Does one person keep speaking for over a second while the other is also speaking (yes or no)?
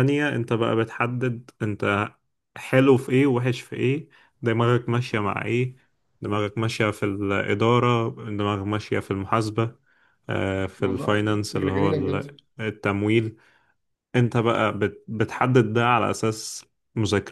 yes